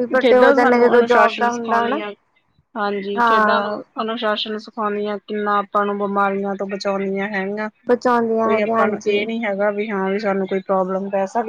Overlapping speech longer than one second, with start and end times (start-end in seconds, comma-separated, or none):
7.9-9.2